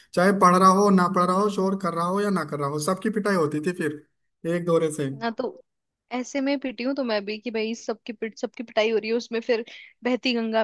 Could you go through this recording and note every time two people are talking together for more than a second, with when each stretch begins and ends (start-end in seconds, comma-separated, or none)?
none